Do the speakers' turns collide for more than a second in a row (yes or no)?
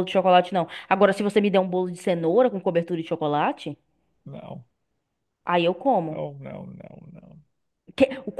no